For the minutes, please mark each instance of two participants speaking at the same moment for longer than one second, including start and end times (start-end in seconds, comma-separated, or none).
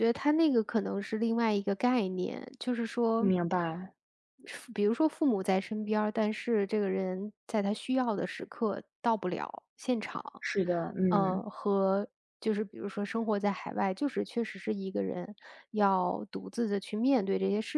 none